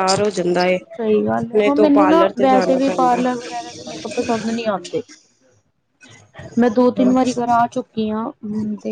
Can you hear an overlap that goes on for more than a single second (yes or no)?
yes